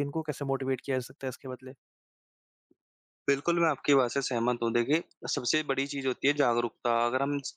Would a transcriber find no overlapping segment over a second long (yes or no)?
yes